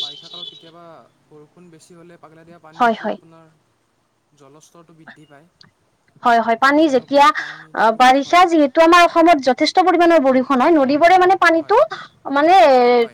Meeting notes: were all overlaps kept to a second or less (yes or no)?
no